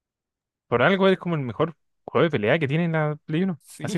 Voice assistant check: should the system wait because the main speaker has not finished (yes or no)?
yes